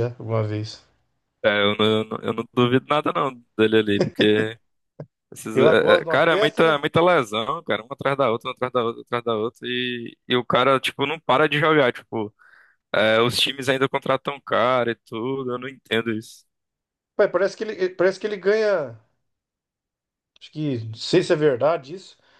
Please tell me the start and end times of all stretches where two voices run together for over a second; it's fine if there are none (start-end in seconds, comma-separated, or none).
5.5-6.8